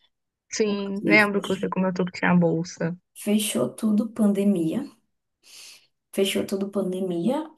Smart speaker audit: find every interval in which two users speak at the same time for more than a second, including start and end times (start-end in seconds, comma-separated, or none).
none